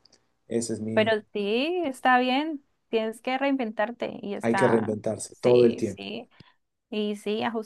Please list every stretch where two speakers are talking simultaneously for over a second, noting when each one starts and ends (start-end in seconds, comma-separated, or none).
4.4-6.1